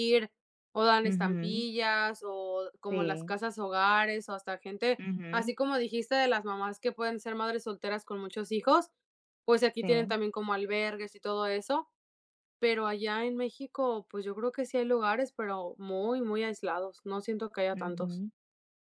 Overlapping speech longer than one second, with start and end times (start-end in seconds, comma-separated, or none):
none